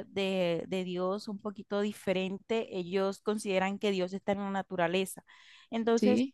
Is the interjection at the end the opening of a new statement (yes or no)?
no